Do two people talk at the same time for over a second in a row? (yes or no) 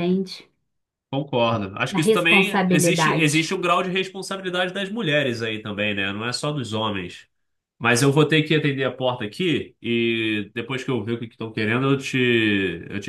yes